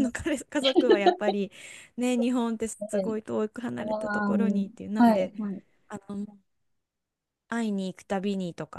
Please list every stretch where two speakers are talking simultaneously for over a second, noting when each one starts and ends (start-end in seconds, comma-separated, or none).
none